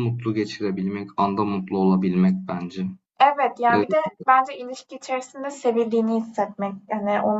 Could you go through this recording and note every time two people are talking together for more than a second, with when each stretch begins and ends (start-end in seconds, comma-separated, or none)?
none